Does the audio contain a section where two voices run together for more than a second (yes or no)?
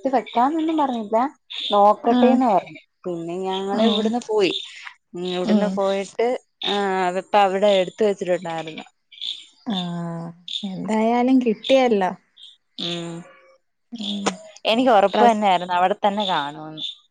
no